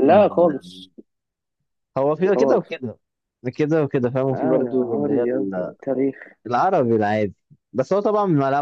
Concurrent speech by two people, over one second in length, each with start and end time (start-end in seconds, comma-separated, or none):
4.3-5.7